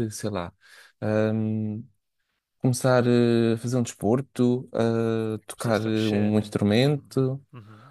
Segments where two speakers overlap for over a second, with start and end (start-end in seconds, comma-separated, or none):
5.5-7.2